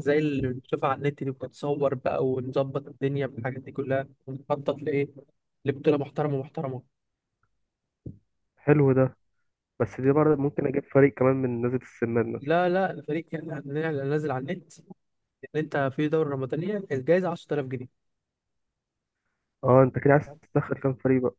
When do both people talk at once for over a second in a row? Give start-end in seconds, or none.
none